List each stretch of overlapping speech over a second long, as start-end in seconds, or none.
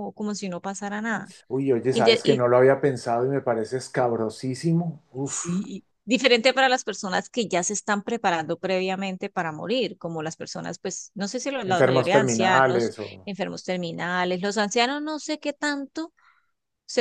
11.6-13.3